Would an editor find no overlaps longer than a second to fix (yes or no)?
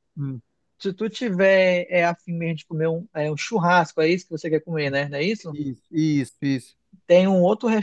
yes